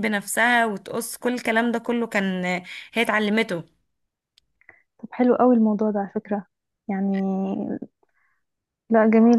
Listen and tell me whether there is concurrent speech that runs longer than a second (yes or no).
no